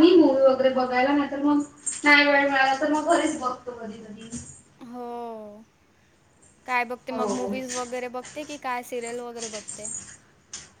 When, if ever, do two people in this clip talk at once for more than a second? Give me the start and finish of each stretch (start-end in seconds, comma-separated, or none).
none